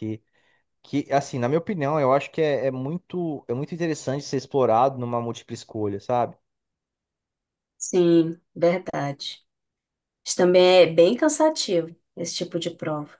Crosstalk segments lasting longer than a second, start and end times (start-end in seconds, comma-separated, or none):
none